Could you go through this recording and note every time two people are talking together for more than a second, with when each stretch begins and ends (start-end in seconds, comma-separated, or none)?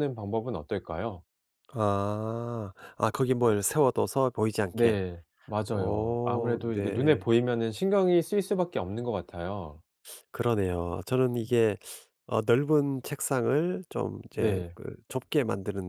5.7-7.3